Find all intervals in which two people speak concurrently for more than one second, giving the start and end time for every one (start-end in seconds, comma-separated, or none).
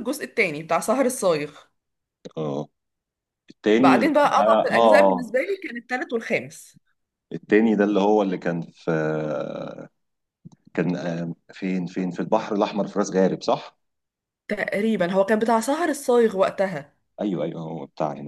3.8-5.4